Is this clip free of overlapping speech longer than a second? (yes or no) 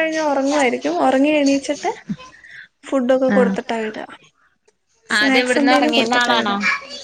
no